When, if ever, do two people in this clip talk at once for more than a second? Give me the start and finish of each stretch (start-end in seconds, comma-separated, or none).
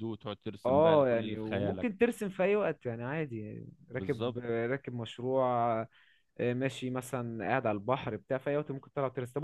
0.7-1.9